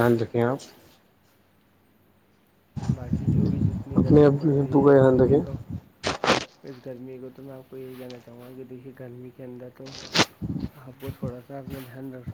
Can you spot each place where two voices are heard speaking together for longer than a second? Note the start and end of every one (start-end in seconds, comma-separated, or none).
4.0-5.4